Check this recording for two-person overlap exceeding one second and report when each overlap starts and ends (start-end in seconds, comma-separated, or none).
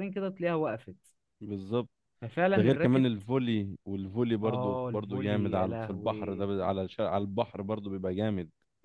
4.4-6.5